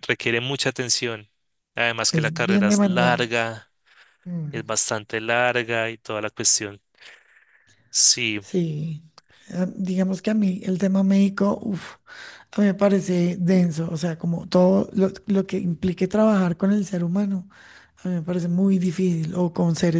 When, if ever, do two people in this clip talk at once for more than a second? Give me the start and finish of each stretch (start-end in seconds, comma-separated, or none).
2.1-3.3